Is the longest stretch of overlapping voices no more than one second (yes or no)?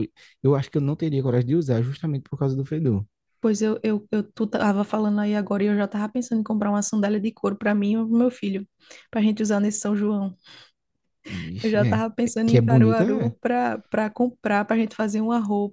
no